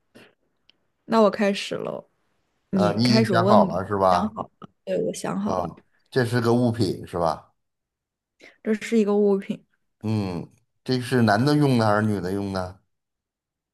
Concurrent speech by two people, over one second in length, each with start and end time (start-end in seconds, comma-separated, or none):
2.7-4.3